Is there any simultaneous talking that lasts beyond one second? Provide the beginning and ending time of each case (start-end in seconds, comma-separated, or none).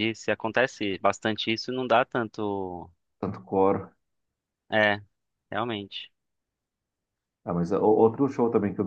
none